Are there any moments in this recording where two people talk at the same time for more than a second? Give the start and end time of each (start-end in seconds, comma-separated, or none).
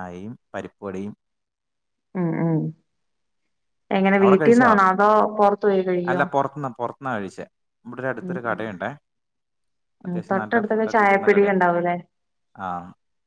10.1-11.5